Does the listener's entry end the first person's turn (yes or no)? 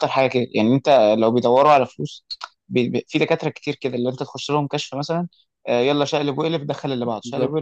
yes